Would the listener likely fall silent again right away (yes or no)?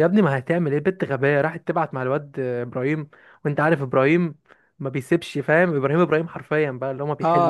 no